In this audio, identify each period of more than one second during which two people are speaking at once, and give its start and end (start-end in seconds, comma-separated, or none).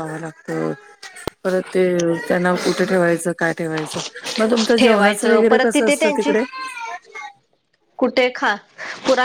4.8-6.3